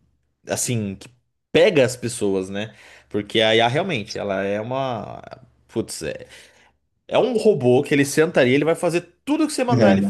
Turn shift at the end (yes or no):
no